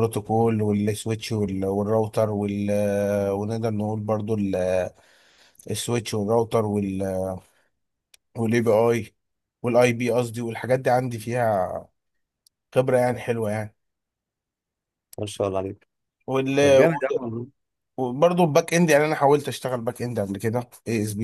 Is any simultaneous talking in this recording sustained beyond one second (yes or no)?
no